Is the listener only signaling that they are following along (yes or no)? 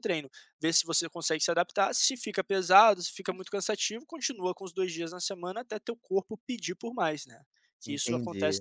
no